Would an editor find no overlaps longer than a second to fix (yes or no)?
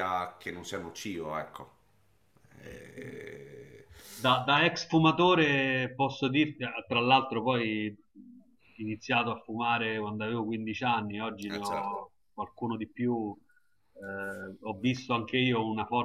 yes